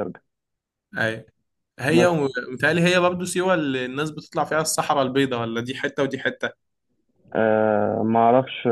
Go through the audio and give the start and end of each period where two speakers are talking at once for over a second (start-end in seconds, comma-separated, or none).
none